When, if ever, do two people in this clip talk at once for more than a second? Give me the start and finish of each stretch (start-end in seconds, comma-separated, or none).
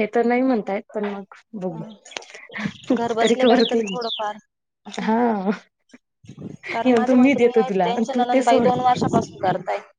6.7-8.7